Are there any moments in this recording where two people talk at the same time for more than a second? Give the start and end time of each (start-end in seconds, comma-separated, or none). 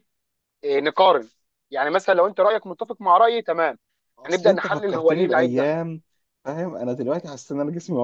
4.2-5.7